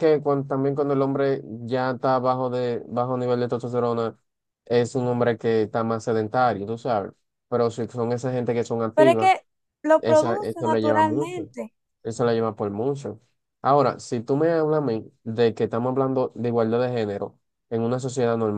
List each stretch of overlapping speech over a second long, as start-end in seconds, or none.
10.0-11.5